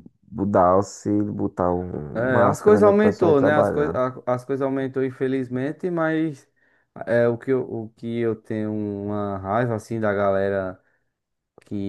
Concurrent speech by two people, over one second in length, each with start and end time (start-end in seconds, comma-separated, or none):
2.1-4.0